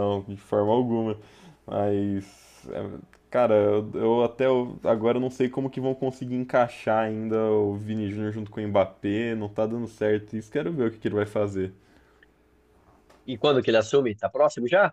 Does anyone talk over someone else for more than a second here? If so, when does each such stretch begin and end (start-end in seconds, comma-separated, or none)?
none